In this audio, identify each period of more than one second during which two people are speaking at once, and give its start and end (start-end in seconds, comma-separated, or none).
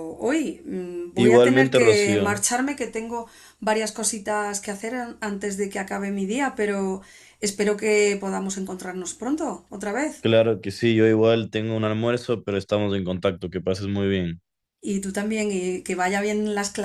1.1-2.4